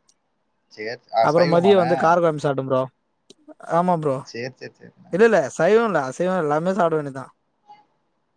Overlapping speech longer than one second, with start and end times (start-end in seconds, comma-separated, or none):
none